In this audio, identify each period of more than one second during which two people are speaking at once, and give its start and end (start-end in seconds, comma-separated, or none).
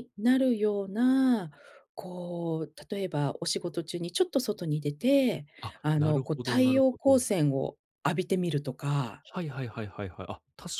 5.8-7.2